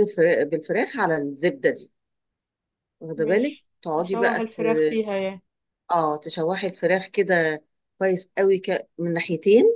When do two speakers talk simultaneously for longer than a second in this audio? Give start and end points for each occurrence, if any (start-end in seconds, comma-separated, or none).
3.2-4.6